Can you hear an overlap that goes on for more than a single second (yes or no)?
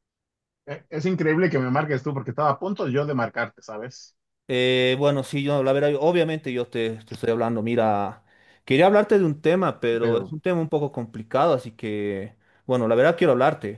no